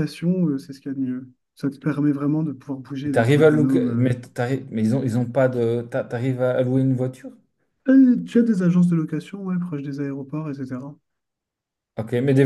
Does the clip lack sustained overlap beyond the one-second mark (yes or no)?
no